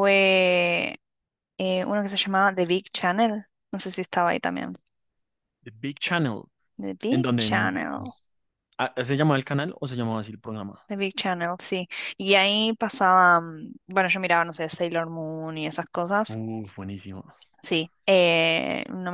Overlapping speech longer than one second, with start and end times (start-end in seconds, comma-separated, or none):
none